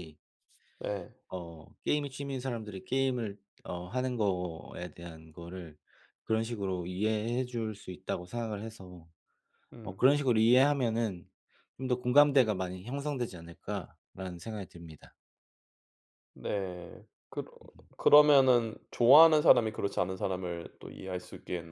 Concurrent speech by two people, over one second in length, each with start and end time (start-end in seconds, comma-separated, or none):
none